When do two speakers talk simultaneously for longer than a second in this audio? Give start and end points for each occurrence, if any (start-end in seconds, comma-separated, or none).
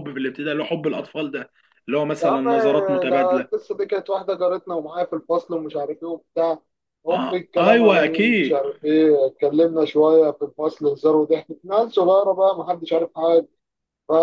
7.1-8.6